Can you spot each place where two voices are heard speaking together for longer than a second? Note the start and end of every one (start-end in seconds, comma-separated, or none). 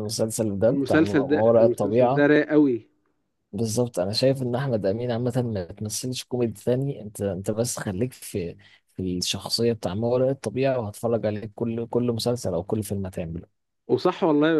0.7-2.3